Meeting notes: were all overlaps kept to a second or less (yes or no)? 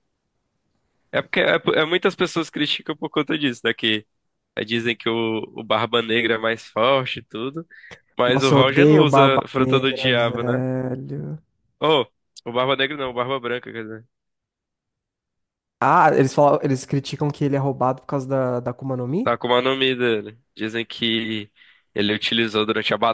no